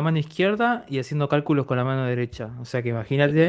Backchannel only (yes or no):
yes